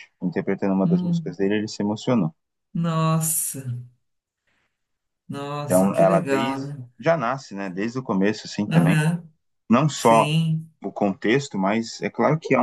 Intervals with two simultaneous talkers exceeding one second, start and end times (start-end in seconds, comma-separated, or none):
5.6-6.9